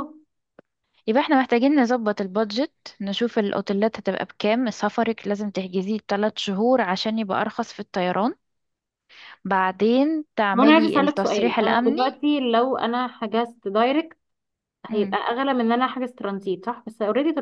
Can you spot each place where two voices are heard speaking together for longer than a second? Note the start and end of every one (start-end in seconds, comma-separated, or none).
10.5-12.0